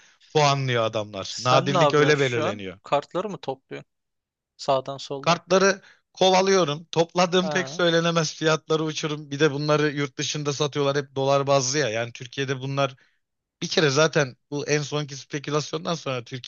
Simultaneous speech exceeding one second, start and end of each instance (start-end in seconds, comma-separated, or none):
1.2-2.8